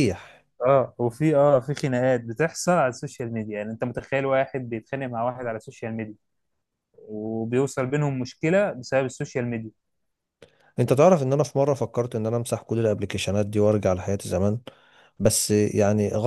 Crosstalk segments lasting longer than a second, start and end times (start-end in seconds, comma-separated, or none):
none